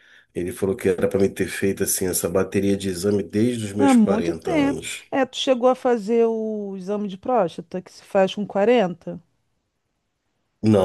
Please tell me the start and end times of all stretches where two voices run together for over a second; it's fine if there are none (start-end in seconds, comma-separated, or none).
3.8-5.0